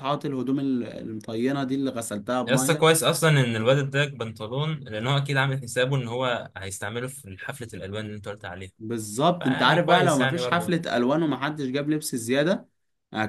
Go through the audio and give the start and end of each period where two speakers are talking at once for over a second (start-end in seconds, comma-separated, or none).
9.4-10.8